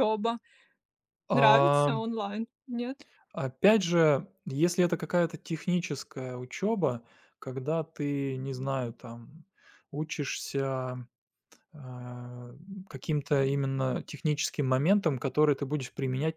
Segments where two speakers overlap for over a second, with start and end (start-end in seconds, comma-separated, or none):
none